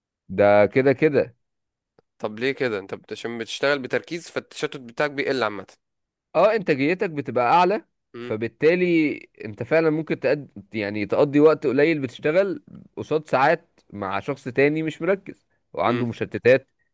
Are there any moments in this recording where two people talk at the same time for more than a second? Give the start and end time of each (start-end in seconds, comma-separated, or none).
none